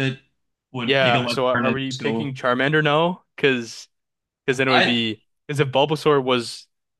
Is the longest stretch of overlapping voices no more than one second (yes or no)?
no